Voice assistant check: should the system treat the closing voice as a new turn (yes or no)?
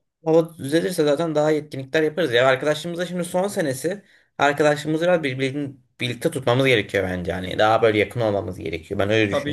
yes